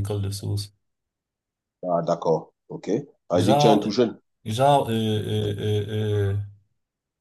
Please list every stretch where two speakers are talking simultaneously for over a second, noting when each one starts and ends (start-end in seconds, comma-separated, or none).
none